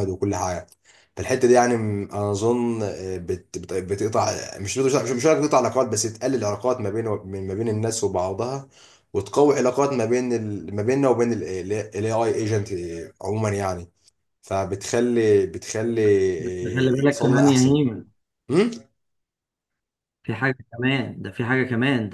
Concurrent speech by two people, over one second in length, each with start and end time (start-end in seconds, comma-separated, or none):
16.5-17.8